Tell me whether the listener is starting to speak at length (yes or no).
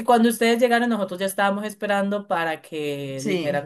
no